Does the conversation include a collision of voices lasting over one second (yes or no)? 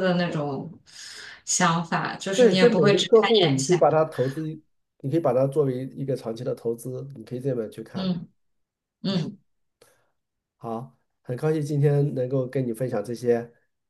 yes